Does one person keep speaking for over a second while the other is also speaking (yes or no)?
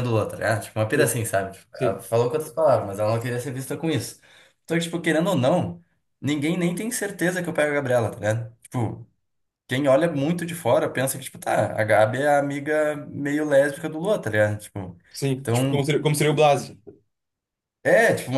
no